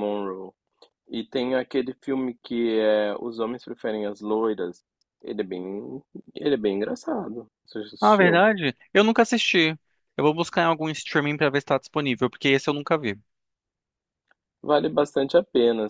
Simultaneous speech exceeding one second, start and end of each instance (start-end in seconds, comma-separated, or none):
none